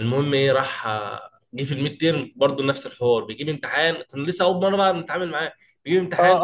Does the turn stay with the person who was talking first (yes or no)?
no